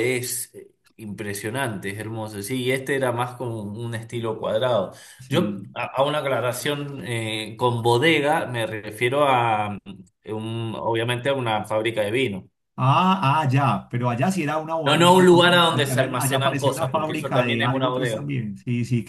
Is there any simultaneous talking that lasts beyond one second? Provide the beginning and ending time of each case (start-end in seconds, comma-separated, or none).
14.8-18.2